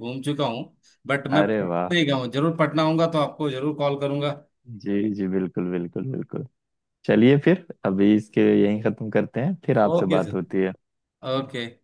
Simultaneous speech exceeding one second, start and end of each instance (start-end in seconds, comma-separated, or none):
none